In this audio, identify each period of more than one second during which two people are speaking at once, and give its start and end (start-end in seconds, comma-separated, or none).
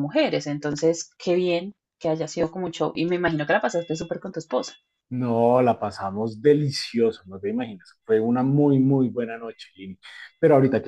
none